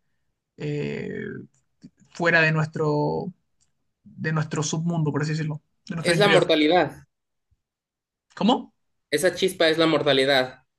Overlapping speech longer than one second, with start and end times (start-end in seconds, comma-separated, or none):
none